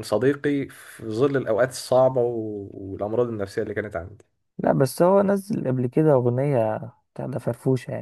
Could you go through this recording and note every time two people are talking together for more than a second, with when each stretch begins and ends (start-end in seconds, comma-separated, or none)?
none